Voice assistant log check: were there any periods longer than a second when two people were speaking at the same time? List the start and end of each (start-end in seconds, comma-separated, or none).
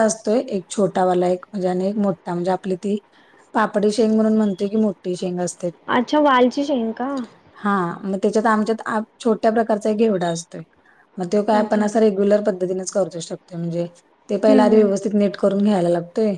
none